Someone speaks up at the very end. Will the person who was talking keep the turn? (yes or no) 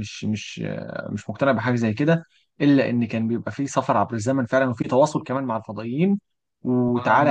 yes